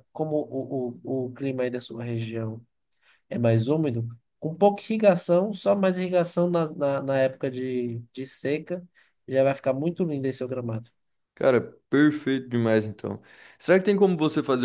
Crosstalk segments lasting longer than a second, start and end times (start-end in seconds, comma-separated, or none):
none